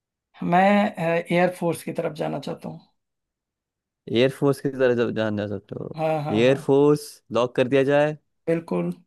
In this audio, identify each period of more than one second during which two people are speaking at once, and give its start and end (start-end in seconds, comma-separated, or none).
none